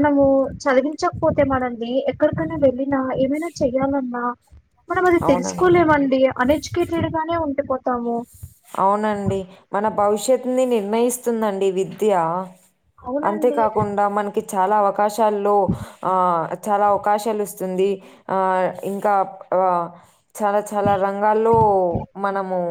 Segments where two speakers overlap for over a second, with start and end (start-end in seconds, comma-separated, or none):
none